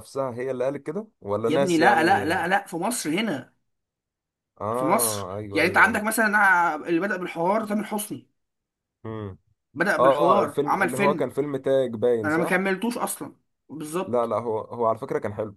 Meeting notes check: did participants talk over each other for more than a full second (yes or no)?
yes